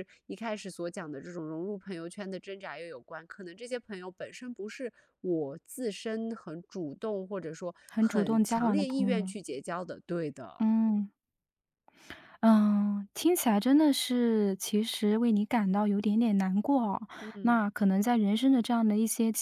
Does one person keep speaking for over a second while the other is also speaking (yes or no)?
yes